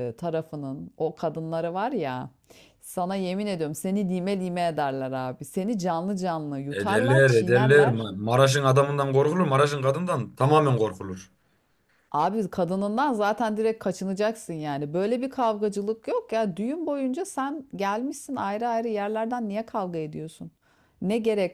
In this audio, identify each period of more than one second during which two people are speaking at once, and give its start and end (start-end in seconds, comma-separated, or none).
6.7-8.1